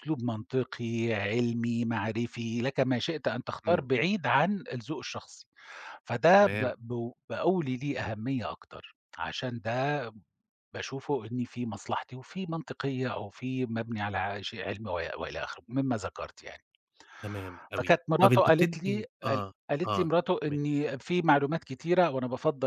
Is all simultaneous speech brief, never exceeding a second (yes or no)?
no